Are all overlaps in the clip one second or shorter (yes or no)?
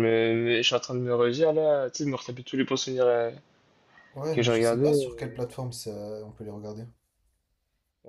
no